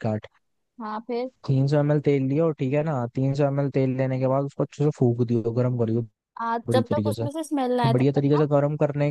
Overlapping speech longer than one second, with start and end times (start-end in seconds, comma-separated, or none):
none